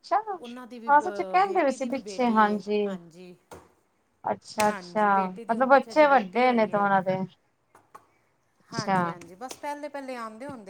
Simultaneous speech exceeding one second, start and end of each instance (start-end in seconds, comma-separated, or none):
0.9-2.2, 4.7-6.9